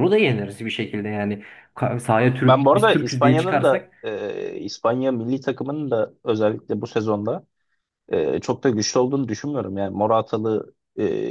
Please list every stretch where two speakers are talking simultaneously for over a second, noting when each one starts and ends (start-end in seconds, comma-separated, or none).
2.4-3.9